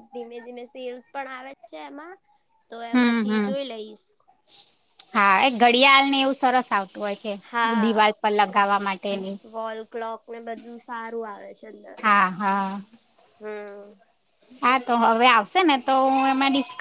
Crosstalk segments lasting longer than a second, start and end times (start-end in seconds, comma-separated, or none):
none